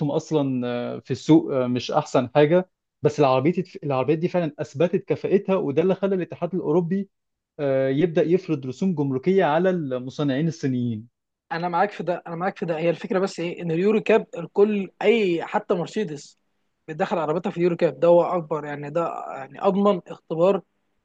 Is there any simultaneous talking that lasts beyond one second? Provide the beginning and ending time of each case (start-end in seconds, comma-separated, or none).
none